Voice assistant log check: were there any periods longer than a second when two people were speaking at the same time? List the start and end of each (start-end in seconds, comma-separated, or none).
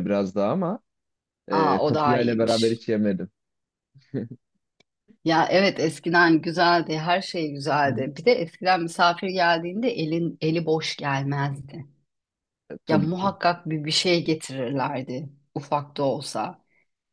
1.5-2.8